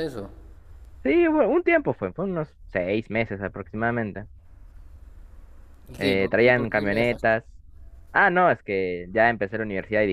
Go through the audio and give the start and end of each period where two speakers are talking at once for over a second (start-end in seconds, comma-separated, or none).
6.0-7.4